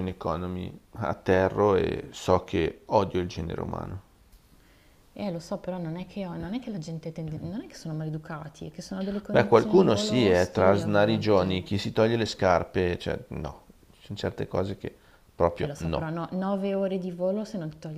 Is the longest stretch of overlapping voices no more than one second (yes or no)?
no